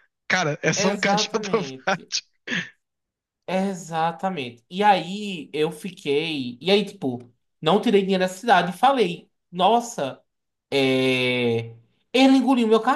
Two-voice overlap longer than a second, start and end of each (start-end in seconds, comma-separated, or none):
0.8-2.1